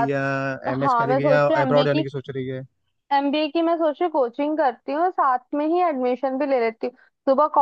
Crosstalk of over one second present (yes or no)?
yes